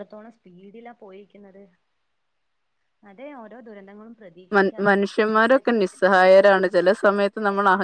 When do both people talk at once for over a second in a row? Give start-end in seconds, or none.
4.6-6.2